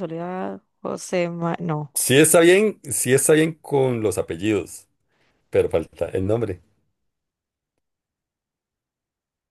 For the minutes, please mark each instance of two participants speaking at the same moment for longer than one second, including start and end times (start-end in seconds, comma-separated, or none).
none